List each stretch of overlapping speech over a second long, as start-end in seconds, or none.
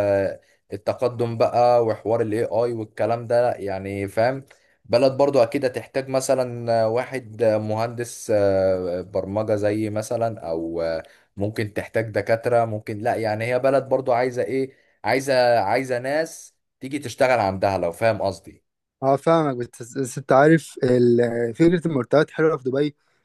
none